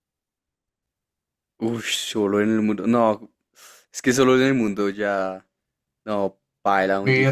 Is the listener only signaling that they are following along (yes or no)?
no